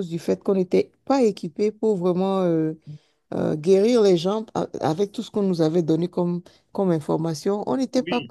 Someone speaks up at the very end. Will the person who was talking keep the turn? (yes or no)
no